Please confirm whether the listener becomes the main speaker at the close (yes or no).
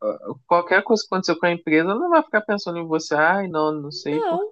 no